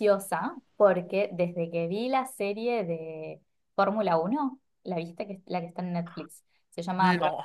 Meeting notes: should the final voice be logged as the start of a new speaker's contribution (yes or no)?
no